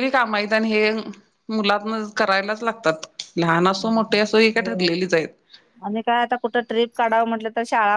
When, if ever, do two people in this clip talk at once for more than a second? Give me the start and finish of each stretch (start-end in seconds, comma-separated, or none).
none